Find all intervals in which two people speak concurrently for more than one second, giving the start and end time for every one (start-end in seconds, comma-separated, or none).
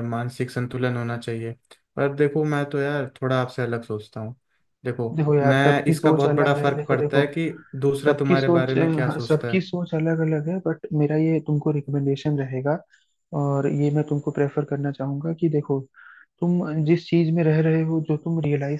5.1-7.2, 8.1-9.6